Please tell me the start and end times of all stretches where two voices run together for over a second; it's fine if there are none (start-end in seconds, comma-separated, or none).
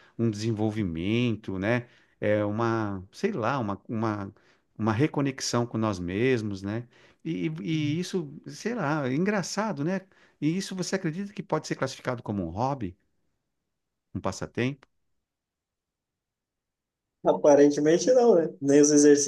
none